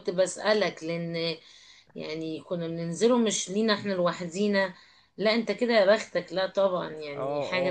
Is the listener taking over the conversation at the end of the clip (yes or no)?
yes